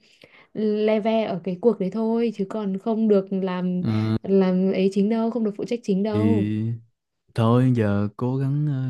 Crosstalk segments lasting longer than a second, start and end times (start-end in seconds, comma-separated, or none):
none